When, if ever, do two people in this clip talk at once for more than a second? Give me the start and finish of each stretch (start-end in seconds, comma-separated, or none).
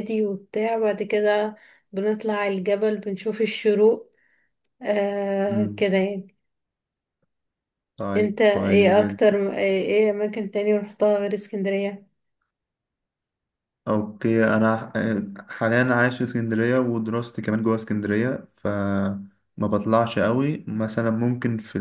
8.2-9.4